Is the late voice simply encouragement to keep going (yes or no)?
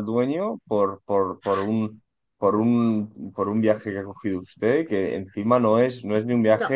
yes